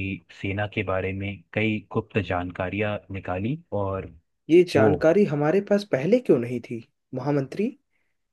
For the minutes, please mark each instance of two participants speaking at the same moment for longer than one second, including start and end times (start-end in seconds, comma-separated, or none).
none